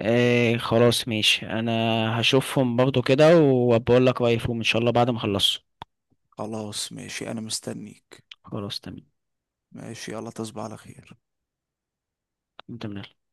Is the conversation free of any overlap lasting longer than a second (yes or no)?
yes